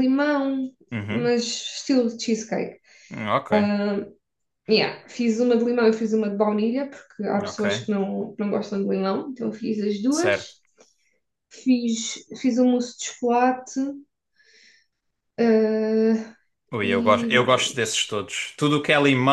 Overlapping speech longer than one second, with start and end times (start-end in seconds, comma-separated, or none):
16.8-18.2